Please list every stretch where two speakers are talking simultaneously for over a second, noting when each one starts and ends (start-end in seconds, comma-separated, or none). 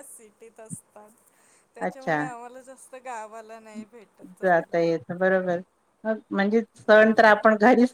none